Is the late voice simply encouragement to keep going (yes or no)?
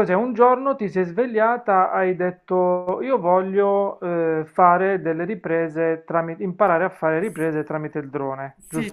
no